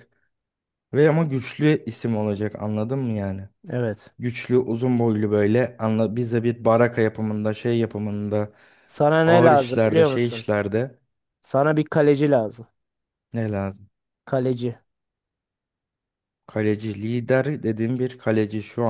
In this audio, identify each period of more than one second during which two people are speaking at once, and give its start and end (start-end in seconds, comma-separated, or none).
9.2-10.4